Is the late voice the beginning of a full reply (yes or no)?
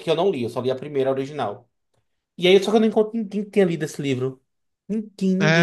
yes